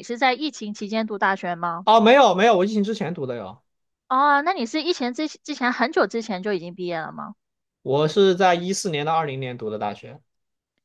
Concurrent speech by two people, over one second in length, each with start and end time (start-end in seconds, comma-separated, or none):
none